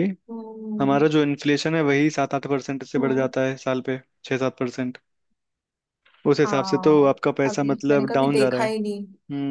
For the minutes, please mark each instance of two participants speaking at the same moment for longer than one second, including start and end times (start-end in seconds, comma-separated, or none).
6.5-8.7